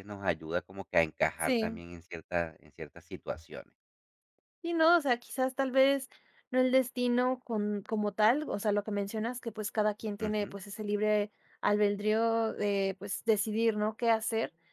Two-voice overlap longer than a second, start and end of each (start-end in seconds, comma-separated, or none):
none